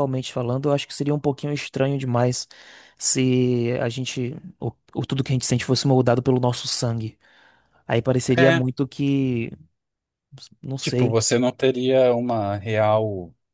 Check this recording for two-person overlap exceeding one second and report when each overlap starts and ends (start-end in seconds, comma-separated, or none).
none